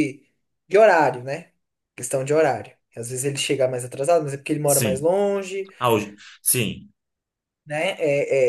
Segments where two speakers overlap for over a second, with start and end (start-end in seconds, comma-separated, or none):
none